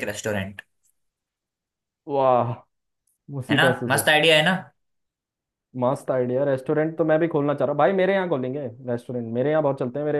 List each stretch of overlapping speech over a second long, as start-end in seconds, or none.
none